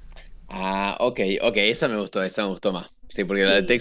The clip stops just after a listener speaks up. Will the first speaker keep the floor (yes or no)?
yes